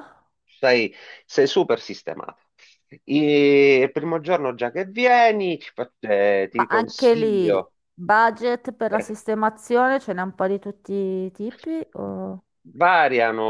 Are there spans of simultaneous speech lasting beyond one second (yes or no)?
yes